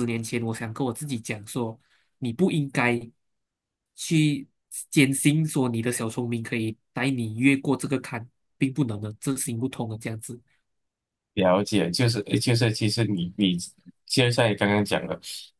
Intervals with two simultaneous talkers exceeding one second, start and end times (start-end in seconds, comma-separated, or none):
none